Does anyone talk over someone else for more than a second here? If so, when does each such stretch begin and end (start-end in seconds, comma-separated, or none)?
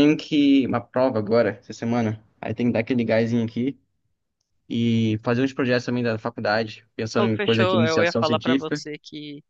7.2-8.8